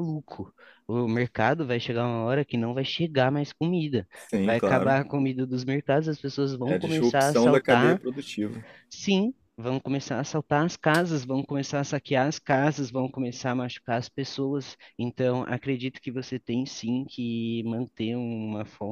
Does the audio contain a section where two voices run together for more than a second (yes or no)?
yes